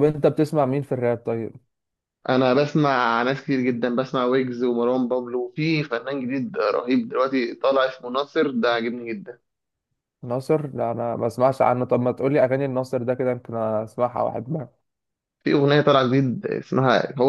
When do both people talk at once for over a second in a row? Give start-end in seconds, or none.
none